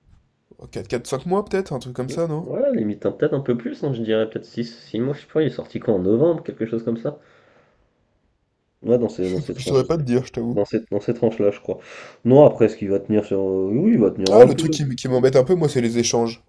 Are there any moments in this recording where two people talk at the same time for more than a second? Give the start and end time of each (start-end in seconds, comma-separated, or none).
none